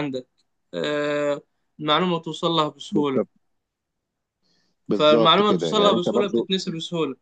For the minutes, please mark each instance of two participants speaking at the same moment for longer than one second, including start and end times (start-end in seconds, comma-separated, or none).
4.9-6.5